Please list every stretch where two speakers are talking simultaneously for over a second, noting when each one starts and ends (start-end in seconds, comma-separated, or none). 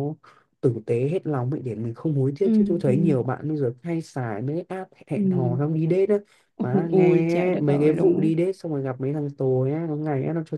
6.8-8.2